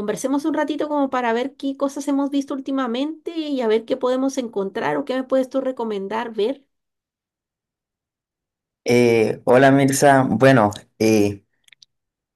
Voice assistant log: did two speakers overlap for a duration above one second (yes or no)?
no